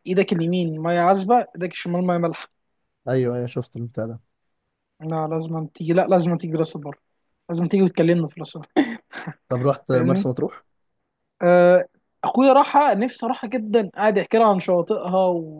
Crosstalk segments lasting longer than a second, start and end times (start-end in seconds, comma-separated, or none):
none